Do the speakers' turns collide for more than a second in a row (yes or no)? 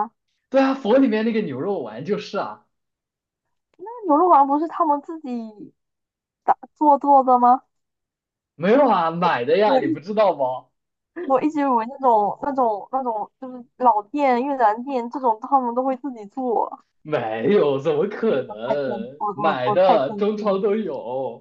yes